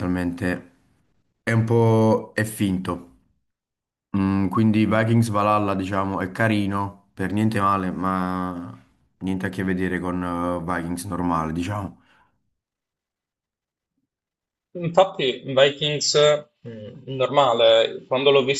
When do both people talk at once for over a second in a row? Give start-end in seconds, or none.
none